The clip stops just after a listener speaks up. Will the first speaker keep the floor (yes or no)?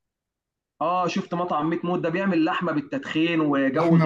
no